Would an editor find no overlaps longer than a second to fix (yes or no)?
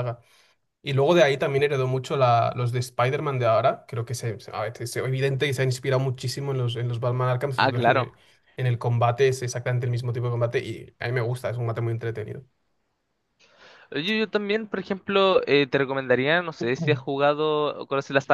yes